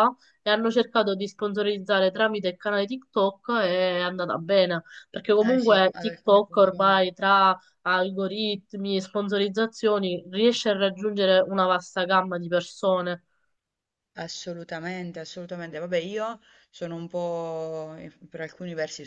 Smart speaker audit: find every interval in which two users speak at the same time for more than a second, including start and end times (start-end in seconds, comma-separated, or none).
5.4-7.0